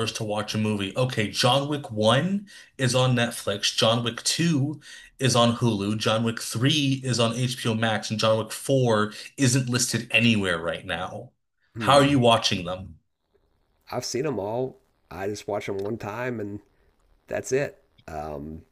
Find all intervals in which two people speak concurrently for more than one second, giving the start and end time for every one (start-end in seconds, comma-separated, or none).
none